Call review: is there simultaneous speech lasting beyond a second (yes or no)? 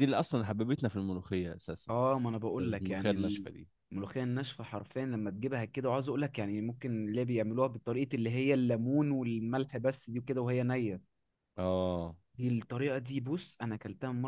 no